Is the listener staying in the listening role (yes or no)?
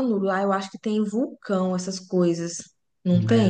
no